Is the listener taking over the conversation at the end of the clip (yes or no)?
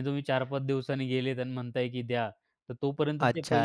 yes